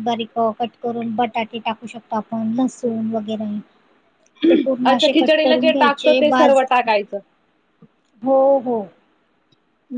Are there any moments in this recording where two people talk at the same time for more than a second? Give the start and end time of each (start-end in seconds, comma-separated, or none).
4.9-6.9